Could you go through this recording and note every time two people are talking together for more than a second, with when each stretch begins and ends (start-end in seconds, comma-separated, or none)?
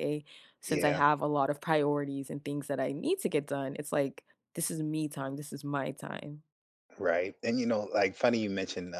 none